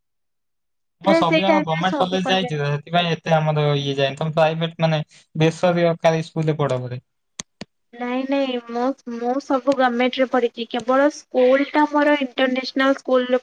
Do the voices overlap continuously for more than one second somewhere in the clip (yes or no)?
yes